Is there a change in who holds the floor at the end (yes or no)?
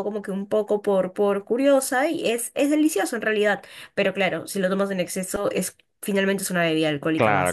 yes